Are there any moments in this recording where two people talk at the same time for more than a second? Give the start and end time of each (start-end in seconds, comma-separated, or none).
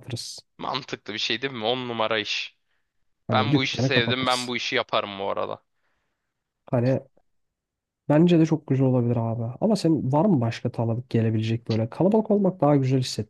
3.3-4.5